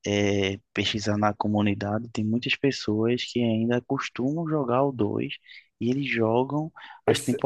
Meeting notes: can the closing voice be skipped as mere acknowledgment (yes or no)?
yes